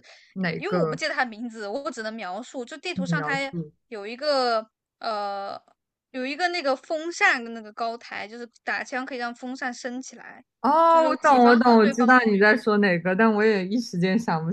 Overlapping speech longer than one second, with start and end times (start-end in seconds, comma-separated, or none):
10.9-12.5